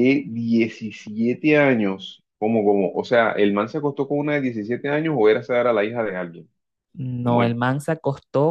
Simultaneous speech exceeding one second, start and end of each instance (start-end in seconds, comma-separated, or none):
none